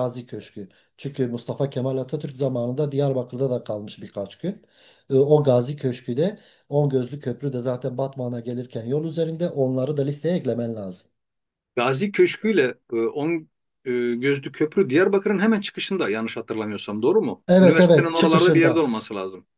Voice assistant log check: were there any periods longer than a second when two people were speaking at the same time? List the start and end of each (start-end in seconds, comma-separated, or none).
17.5-18.9